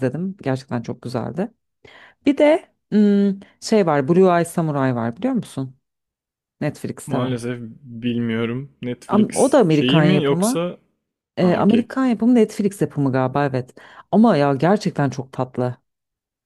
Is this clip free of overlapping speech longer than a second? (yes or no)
no